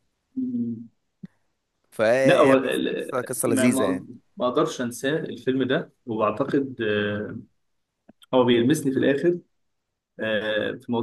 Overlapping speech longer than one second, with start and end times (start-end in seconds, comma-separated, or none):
2.2-4.1